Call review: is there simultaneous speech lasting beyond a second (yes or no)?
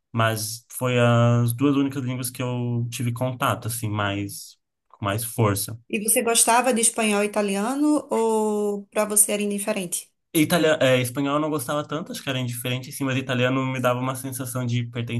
no